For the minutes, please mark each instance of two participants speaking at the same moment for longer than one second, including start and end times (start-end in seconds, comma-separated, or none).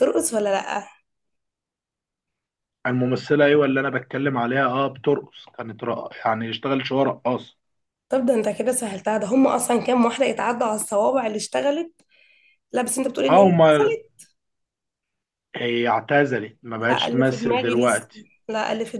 16.8-18.1